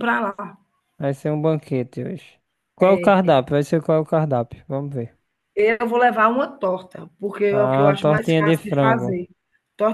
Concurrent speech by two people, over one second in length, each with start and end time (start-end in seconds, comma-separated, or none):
7.5-9.2